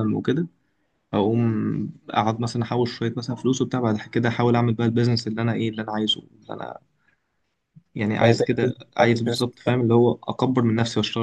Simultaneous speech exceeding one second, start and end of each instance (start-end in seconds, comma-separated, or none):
8.2-9.9